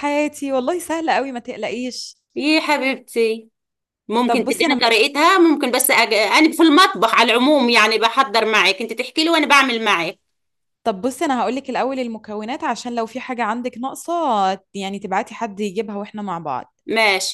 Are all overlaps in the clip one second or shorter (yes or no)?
yes